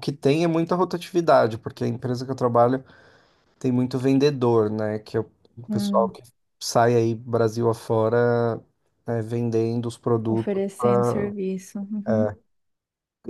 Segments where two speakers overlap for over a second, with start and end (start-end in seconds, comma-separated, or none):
none